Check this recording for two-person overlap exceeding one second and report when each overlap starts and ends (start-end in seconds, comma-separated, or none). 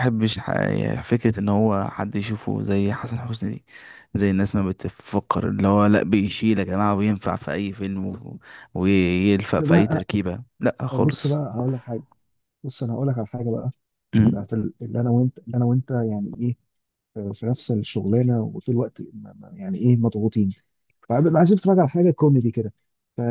none